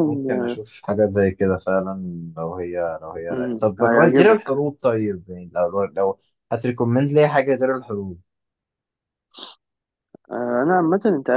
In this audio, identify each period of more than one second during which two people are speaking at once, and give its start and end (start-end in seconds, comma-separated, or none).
3.3-4.5